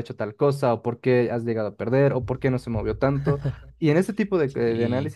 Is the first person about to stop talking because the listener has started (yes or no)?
no